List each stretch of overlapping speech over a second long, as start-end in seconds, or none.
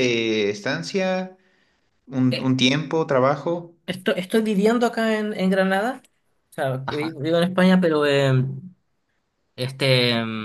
none